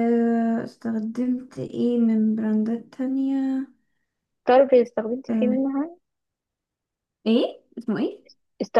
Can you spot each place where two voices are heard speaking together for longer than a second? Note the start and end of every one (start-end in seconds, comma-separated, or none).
none